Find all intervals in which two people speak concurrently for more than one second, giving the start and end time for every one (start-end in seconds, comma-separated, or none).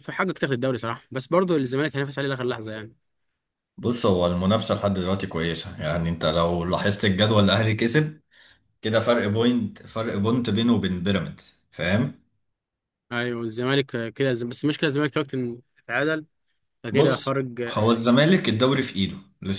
none